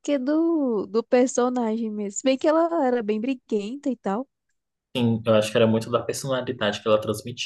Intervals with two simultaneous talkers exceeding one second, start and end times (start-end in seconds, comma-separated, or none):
none